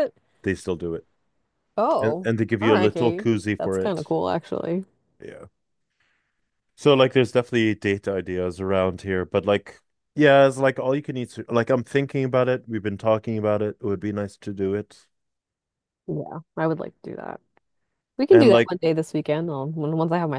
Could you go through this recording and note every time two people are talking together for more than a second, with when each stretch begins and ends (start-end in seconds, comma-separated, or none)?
2.0-4.1